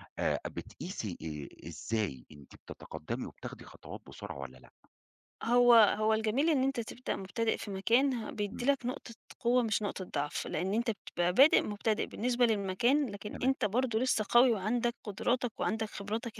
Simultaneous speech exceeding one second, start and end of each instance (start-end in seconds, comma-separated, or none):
none